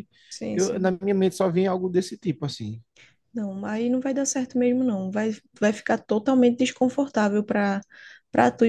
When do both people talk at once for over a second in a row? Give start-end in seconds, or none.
none